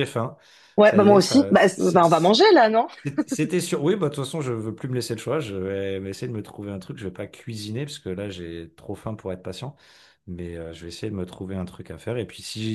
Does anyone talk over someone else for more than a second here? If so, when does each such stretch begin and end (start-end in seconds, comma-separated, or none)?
0.8-2.0